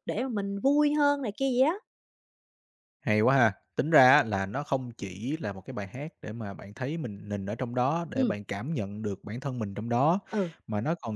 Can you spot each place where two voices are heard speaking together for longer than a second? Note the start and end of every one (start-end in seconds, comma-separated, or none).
none